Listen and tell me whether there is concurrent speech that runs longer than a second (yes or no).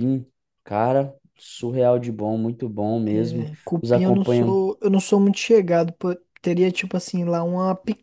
yes